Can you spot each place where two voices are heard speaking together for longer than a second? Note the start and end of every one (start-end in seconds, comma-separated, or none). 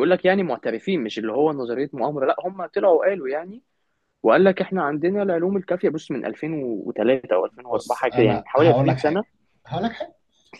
7.7-9.2